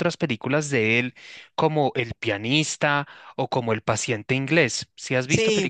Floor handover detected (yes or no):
yes